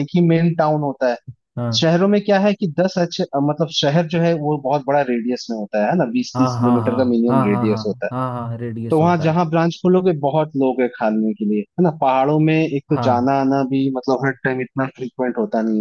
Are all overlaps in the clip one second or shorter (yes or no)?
no